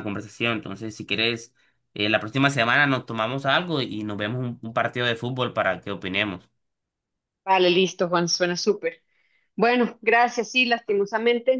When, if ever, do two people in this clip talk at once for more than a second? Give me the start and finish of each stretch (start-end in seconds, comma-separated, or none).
none